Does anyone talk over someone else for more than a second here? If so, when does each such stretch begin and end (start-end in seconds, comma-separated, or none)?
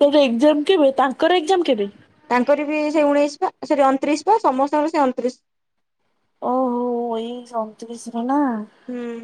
none